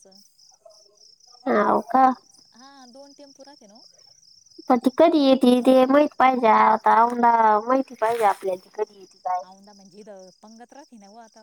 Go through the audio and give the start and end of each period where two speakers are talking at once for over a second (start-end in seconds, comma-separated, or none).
none